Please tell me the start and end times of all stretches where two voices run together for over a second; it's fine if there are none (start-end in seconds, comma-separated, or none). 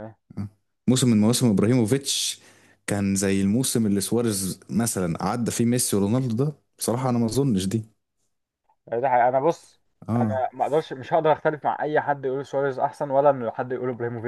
none